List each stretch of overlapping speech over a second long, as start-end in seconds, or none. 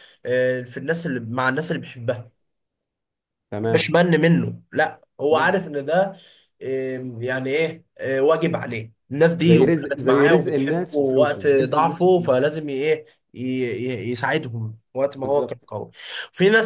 9.4-12.4